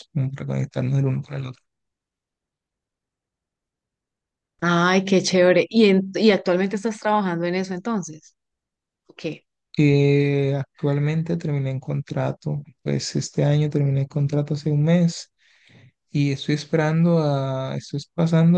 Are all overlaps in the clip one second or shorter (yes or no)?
yes